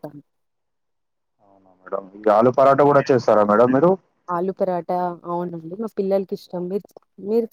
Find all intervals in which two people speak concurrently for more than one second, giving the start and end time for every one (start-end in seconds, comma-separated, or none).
none